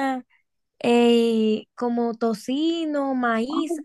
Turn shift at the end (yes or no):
yes